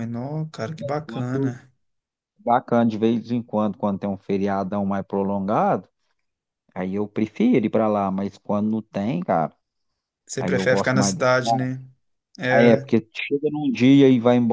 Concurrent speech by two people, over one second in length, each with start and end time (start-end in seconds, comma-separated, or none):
10.4-11.7